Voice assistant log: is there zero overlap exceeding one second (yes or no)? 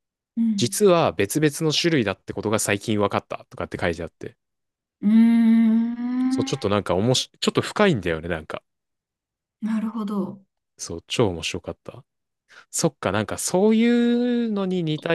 yes